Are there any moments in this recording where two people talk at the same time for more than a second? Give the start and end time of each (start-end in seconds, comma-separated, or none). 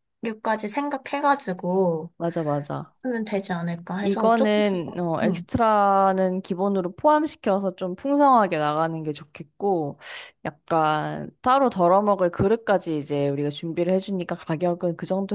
4.0-5.5